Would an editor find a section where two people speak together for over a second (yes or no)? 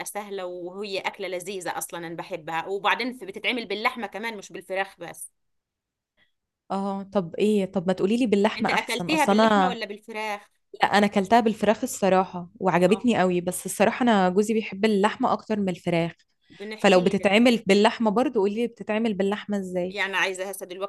yes